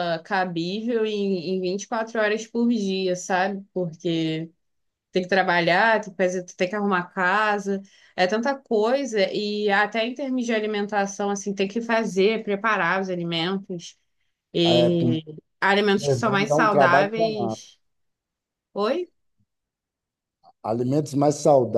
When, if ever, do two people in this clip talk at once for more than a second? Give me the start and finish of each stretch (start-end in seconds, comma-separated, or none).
16.2-17.6